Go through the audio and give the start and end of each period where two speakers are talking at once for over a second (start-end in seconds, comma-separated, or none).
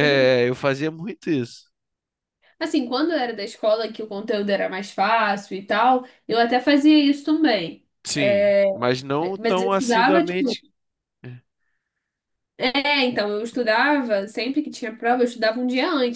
9.4-10.6